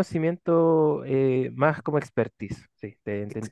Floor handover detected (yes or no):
yes